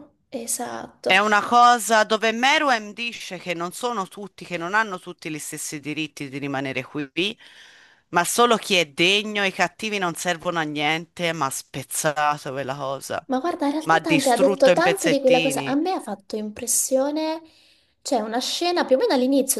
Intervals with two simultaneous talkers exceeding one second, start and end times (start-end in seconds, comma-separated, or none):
13.8-15.8